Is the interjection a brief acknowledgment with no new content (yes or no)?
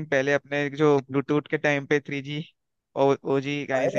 no